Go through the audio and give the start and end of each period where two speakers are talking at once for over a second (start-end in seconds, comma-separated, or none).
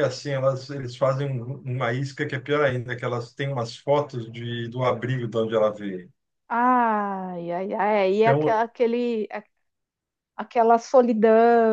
none